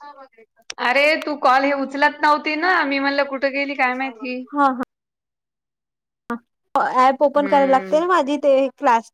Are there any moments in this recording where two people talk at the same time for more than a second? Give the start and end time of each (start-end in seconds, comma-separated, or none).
none